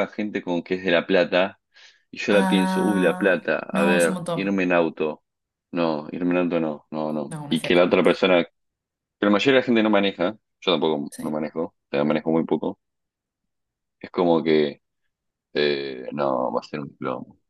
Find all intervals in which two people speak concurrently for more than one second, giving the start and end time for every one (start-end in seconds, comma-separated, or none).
2.3-4.6